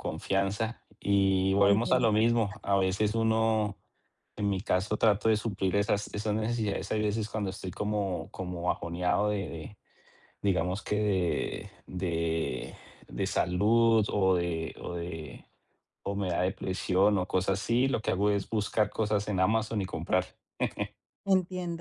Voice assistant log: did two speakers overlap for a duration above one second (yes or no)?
yes